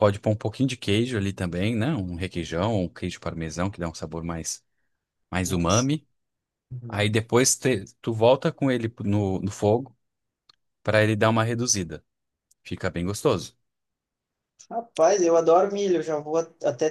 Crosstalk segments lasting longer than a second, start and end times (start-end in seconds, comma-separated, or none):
none